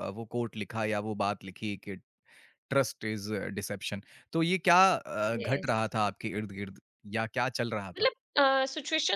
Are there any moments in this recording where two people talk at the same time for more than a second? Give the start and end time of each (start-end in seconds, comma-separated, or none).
none